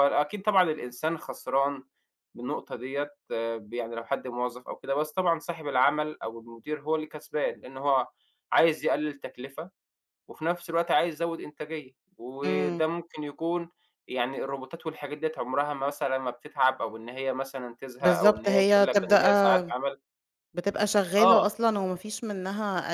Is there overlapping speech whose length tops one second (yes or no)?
yes